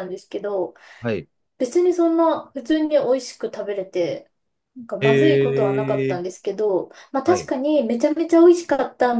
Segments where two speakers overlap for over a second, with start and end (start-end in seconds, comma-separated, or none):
5.0-6.2